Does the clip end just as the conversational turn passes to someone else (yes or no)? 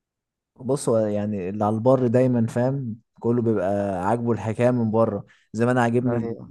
no